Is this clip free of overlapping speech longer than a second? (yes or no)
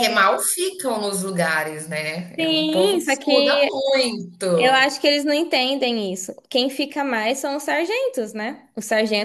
no